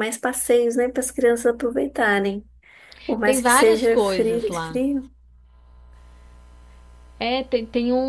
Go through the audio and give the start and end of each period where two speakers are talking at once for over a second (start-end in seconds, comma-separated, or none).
3.2-4.8